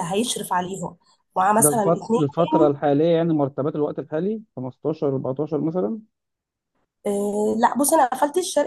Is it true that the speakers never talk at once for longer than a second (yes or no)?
no